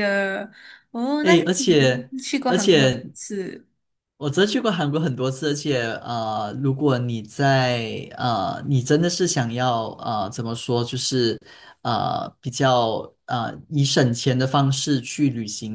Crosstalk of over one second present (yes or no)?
yes